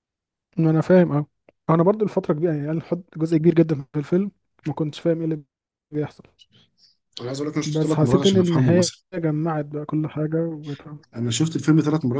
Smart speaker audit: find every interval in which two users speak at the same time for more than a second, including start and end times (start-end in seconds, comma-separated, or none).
7.7-9.0